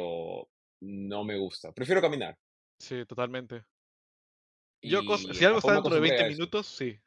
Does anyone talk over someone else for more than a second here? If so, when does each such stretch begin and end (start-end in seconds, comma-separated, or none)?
4.9-6.5